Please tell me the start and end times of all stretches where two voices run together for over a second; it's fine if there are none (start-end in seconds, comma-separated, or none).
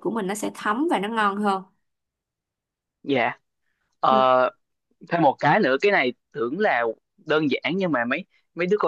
none